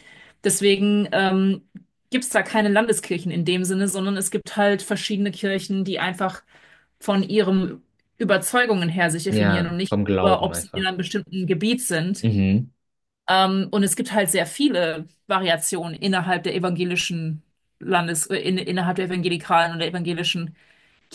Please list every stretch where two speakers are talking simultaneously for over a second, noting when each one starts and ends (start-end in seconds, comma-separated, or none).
9.3-10.9